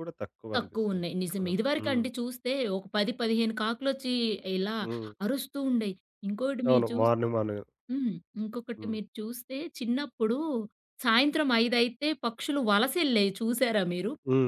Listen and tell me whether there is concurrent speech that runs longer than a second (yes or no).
yes